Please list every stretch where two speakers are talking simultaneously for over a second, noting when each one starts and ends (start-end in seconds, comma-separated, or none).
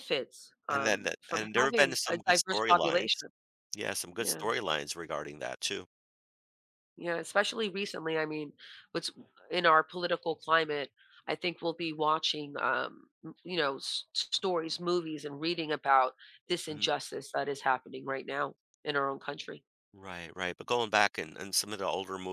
0.7-3.2